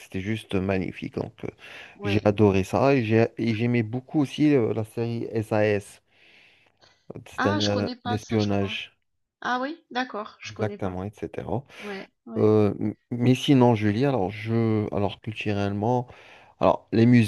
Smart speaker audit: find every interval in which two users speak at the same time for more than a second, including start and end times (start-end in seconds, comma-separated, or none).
7.4-8.8